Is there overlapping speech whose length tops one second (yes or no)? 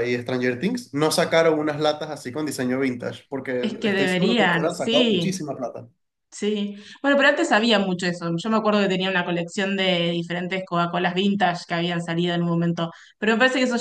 yes